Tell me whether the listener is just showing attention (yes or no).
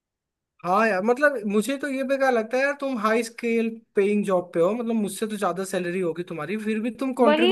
no